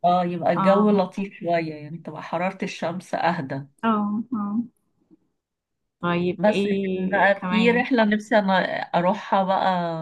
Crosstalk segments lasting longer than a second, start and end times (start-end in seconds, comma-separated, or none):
6.4-7.8